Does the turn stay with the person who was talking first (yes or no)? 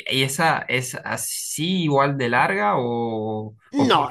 no